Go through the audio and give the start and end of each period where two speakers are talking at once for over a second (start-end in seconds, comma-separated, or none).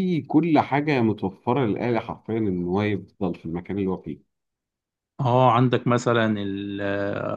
none